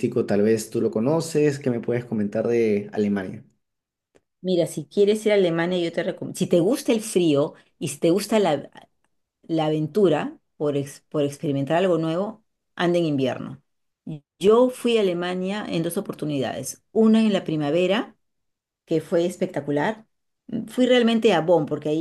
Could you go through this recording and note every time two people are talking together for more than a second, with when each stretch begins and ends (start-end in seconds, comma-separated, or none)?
none